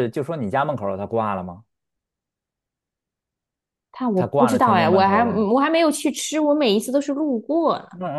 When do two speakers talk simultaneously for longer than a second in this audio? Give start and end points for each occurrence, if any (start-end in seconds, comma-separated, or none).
4.1-5.5